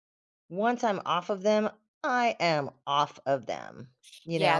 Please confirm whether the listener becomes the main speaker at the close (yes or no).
yes